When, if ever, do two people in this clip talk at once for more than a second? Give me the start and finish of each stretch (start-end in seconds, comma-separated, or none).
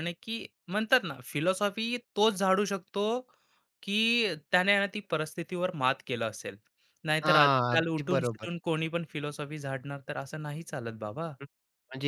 7.2-8.5